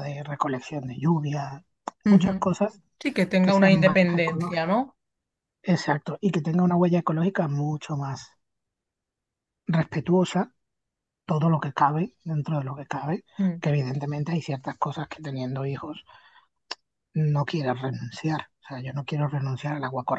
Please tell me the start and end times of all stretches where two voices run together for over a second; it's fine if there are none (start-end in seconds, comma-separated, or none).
3.4-4.6